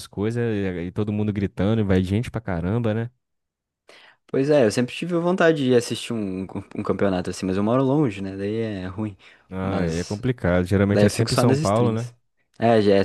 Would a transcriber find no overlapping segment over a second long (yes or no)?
no